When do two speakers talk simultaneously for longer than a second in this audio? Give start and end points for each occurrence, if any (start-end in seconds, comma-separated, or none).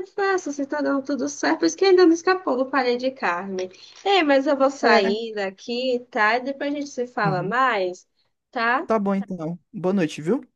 none